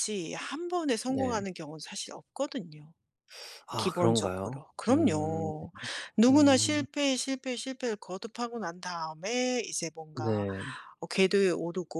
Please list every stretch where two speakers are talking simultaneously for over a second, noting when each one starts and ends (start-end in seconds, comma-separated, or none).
3.8-5.5